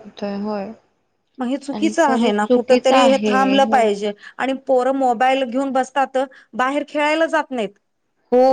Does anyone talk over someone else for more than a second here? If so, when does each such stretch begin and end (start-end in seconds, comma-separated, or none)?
1.8-3.8